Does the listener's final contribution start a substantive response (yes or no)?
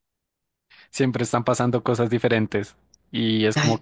no